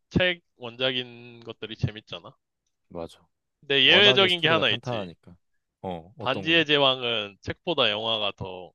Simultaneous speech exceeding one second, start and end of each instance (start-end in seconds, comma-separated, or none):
3.8-5.1